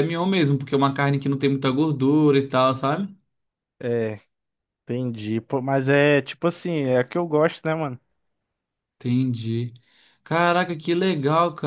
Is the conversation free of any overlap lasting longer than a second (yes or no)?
yes